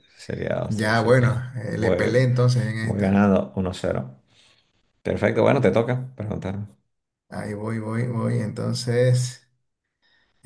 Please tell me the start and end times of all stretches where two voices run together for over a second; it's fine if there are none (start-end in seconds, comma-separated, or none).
0.7-2.2